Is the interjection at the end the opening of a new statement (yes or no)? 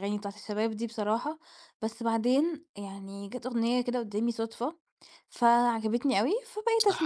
yes